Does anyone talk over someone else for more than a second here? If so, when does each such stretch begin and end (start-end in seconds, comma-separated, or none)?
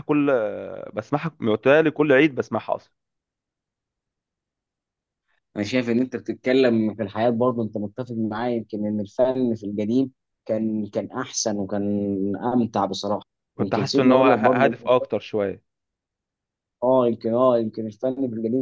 13.6-14.8